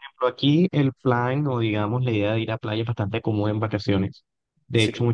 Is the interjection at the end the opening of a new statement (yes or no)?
no